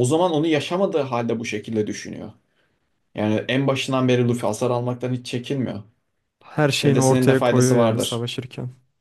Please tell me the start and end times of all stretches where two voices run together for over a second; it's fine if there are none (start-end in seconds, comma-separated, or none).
6.8-8.3